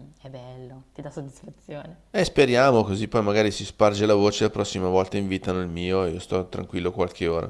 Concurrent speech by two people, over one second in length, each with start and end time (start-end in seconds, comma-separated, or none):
none